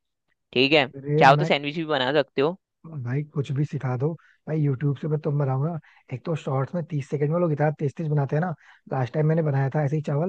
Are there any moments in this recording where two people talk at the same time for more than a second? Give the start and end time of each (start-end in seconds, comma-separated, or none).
none